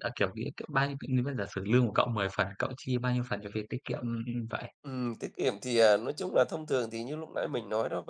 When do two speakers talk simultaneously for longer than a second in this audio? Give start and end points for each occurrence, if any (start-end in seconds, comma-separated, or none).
none